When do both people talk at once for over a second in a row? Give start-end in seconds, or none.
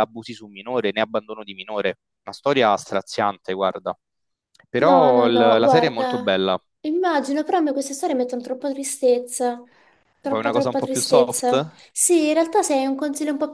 4.8-6.4, 10.2-11.8